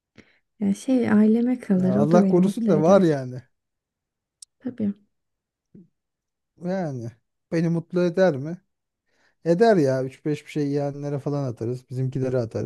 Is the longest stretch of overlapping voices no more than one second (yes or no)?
no